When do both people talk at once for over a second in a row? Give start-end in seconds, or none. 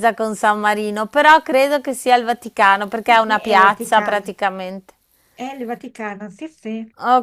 3.1-4.3